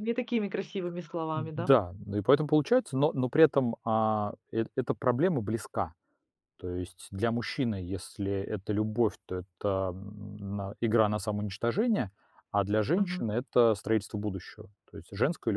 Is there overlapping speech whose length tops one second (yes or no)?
no